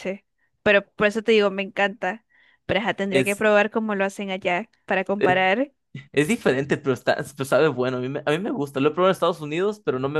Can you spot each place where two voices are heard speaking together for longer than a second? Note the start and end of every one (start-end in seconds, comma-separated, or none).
none